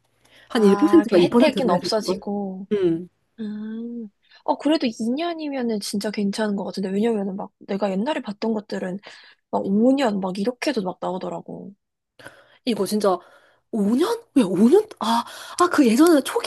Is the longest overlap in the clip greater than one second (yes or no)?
yes